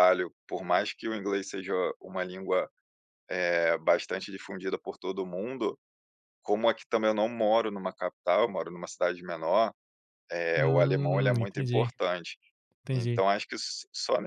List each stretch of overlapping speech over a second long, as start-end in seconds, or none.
10.6-11.9